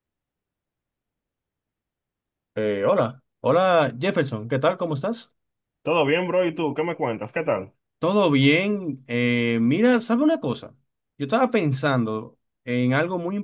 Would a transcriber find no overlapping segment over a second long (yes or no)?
yes